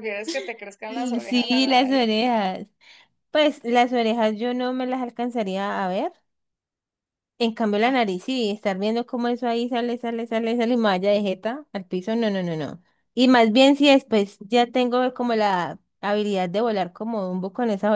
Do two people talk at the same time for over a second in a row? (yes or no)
yes